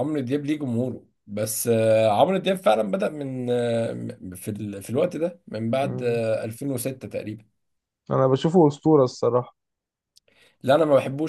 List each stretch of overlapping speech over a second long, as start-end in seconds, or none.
none